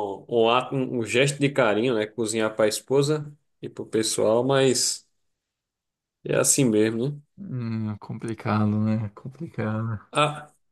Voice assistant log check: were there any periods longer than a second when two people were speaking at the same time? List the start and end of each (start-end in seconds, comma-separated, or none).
none